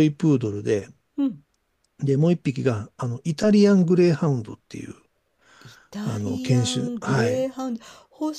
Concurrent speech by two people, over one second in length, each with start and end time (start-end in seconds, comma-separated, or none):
6.0-7.5